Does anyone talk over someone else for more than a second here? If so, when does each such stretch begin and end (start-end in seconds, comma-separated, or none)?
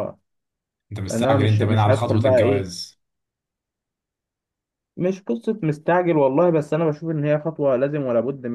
1.1-2.7